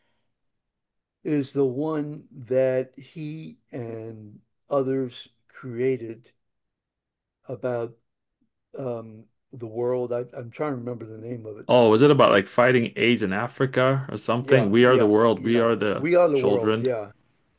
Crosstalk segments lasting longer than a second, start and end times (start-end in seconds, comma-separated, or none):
14.4-16.9